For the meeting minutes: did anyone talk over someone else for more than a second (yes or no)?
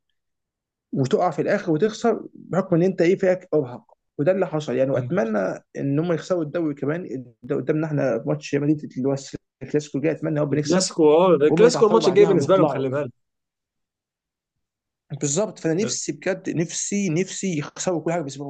yes